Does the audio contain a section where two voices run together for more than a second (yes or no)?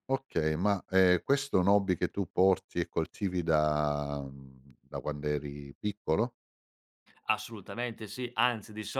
no